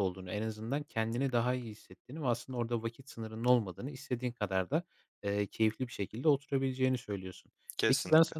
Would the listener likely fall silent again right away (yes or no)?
yes